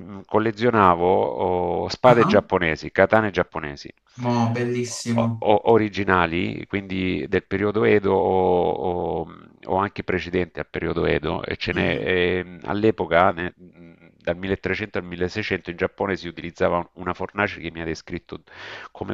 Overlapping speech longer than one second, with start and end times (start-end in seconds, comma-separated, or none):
none